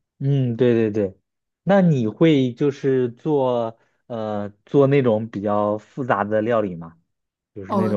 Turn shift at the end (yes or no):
yes